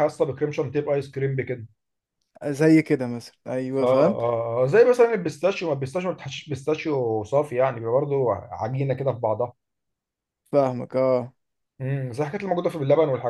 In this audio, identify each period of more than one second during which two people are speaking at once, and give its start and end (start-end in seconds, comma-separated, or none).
none